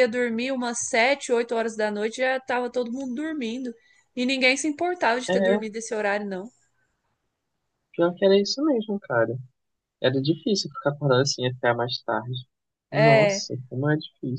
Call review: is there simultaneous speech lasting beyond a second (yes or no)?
no